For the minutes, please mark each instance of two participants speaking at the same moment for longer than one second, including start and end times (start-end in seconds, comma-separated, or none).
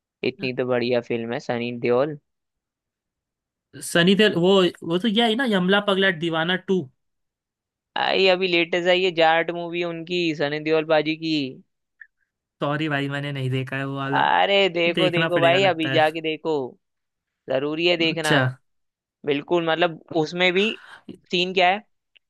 14.1-16.0